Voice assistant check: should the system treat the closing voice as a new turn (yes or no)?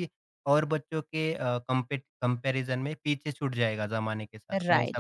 yes